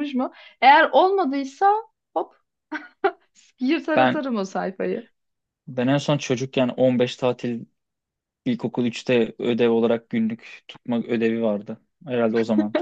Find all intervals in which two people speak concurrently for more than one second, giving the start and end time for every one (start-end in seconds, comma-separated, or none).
none